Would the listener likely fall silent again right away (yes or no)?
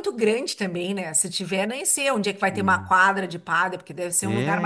no